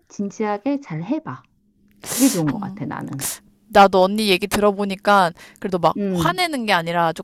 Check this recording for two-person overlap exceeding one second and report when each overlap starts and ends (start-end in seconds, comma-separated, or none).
none